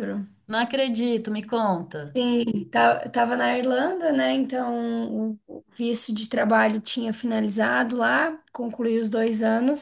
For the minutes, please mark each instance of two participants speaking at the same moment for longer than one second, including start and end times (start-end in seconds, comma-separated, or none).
none